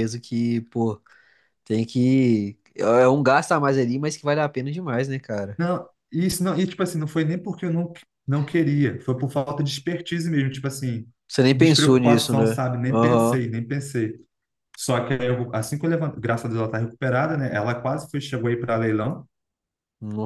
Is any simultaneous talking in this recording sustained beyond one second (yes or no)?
yes